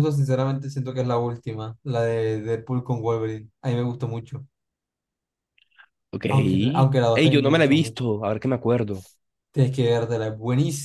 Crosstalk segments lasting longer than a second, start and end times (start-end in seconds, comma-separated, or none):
6.3-8.0